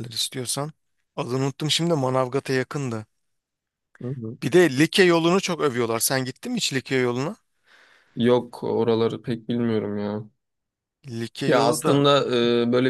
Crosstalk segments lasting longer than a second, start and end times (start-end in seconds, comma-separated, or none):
none